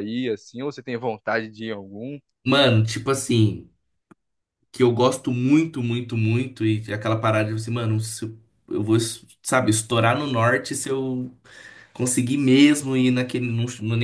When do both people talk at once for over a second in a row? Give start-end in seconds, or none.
none